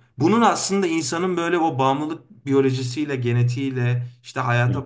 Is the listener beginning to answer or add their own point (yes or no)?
no